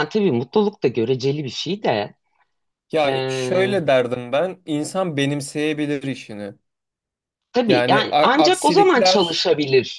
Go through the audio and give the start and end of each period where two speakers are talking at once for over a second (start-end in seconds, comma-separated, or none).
7.7-9.5